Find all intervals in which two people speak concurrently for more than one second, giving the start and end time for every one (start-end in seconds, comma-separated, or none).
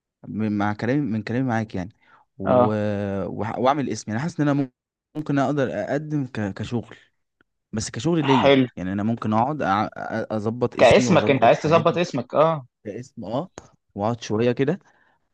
10.8-12.0